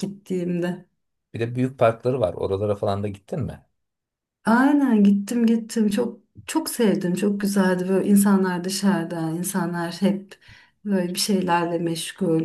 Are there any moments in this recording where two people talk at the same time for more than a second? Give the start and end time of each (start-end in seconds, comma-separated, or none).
none